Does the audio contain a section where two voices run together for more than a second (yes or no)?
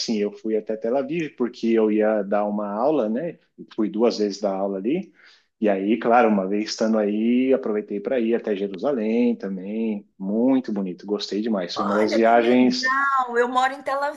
yes